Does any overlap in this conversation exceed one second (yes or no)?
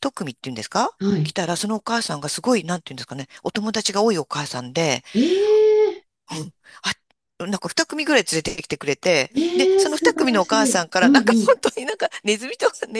yes